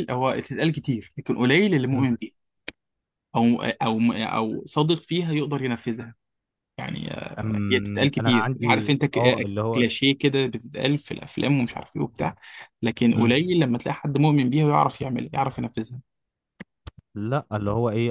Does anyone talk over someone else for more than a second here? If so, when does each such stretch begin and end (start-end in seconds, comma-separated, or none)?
7.4-9.9